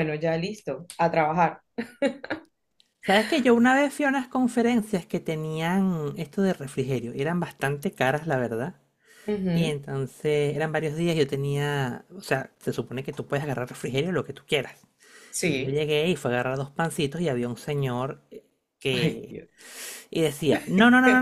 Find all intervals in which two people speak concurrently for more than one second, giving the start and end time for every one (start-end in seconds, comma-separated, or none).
none